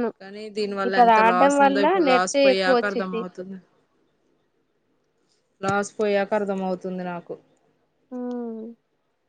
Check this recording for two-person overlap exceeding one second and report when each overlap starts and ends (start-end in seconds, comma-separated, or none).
0.9-3.2